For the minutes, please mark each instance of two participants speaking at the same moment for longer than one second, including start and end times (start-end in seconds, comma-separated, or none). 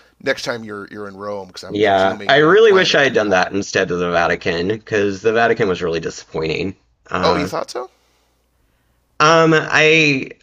1.7-3.5